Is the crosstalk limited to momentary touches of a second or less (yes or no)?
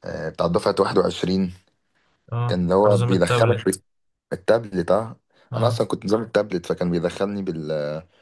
no